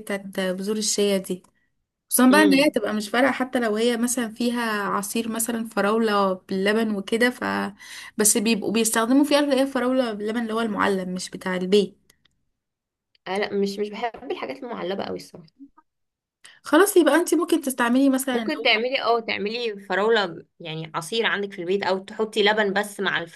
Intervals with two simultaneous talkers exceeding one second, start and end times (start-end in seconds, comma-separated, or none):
none